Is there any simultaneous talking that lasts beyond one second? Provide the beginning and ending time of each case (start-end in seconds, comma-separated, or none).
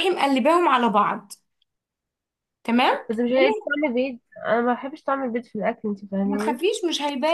none